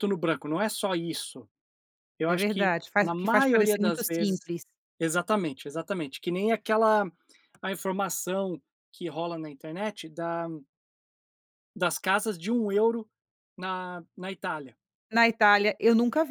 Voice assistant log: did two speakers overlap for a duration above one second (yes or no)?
yes